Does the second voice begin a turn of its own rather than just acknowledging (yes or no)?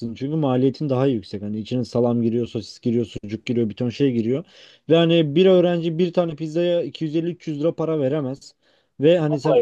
no